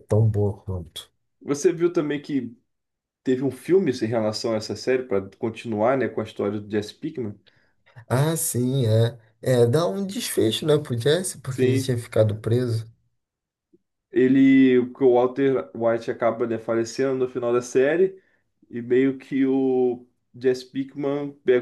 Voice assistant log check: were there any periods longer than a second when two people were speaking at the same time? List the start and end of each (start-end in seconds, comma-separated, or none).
none